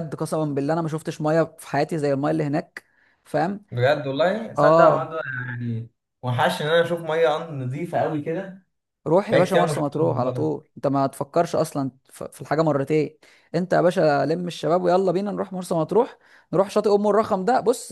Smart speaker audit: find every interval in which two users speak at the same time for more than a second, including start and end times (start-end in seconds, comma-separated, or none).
9.3-10.6